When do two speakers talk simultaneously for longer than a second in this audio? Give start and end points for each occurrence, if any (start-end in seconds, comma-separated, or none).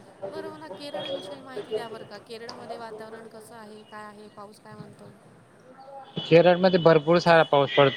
none